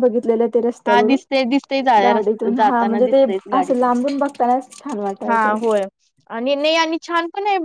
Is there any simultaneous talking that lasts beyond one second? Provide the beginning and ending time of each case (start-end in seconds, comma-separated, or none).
2.0-3.9